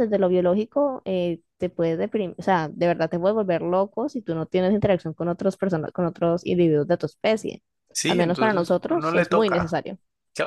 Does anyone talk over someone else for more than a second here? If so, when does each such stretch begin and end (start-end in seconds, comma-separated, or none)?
8.1-9.8